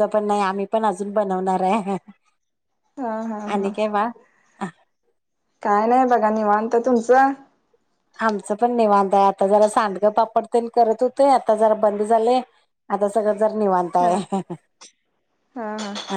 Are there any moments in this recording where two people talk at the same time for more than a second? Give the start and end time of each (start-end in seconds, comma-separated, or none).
none